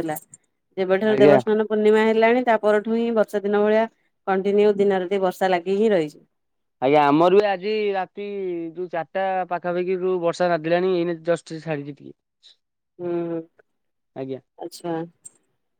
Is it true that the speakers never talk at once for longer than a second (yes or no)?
yes